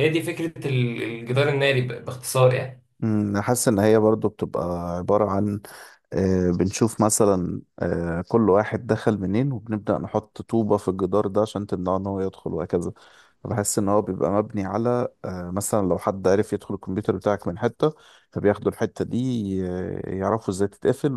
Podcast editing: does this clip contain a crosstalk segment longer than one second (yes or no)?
no